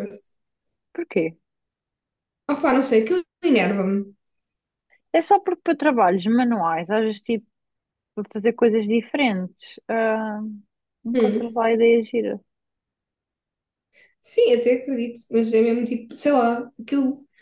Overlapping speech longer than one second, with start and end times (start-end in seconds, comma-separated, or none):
none